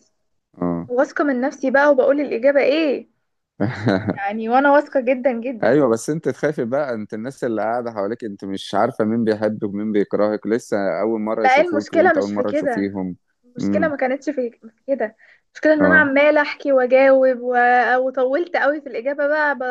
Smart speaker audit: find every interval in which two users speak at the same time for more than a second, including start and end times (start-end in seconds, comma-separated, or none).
11.4-12.9